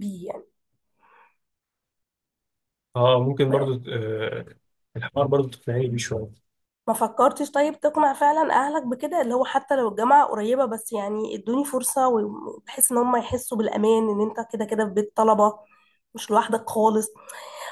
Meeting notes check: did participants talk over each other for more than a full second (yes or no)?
no